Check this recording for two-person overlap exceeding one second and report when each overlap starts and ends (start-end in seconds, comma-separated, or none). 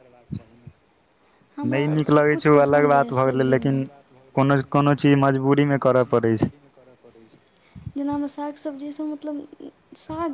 1.7-3.8